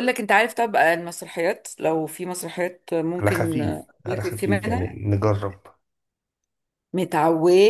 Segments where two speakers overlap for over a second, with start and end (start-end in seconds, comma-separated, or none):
3.2-5.0